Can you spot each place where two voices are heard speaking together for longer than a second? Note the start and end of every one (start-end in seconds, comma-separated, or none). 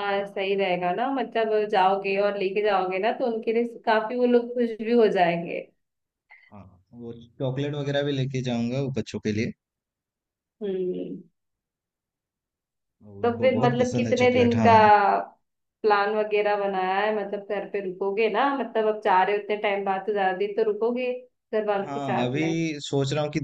13.2-14.7